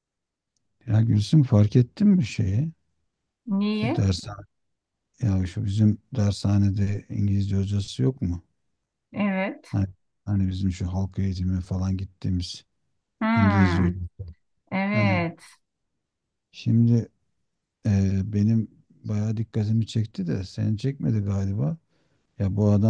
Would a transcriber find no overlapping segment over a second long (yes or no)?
yes